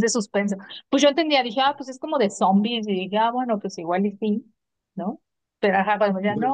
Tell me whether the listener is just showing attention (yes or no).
yes